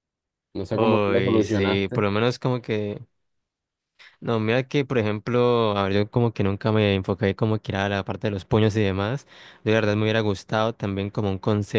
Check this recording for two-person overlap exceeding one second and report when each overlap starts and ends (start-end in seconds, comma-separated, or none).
0.7-2.0